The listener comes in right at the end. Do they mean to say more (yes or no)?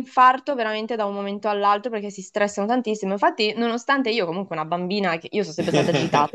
no